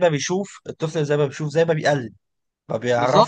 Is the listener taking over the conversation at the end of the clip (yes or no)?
yes